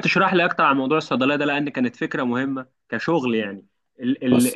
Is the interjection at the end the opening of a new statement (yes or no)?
no